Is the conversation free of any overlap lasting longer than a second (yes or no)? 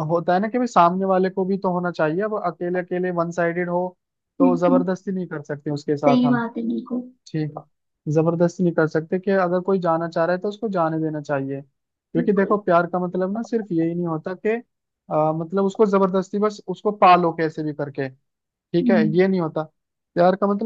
yes